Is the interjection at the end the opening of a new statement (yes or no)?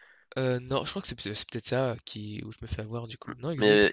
yes